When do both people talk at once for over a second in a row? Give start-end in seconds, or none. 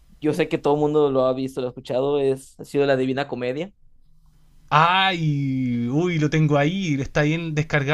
none